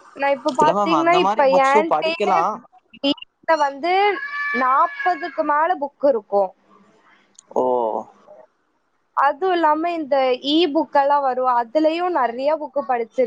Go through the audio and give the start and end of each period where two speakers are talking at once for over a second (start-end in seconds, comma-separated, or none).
0.6-2.4